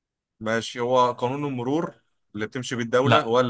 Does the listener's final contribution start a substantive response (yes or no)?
no